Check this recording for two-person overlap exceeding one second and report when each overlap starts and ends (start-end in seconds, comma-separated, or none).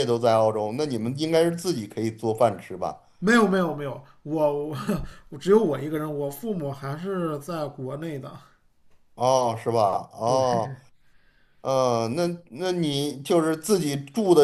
none